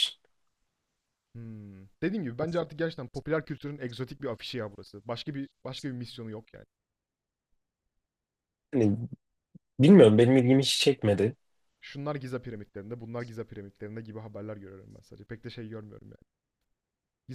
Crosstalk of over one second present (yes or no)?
no